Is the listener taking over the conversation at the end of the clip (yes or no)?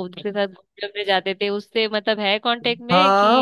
yes